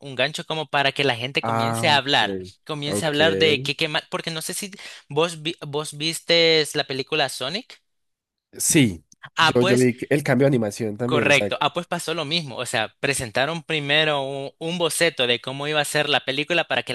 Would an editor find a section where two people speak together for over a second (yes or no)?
yes